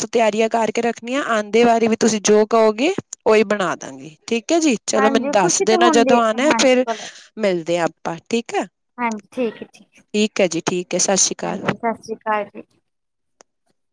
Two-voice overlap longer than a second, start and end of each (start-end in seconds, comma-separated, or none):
5.0-6.8